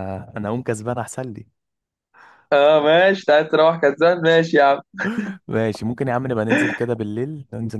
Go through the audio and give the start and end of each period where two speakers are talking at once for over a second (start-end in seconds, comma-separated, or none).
none